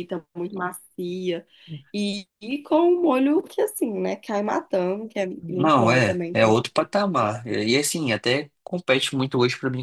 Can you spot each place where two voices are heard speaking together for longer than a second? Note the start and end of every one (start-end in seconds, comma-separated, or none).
5.4-6.9